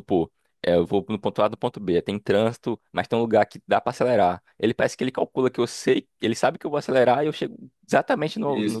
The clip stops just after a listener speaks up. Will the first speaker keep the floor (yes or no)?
no